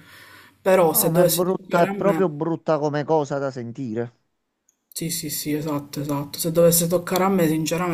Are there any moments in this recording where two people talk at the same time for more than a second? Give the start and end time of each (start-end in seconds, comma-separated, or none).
0.9-2.3